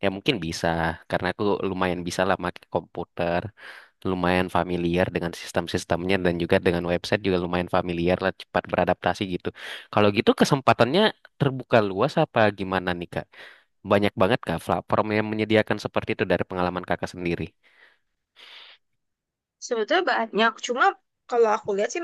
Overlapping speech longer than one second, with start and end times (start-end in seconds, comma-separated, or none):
none